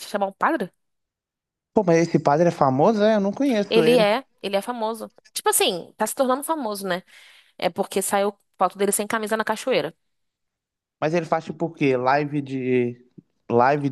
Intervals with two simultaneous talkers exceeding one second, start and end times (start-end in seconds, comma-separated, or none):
none